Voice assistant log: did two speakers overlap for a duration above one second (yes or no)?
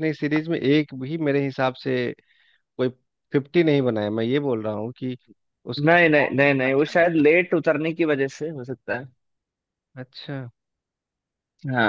yes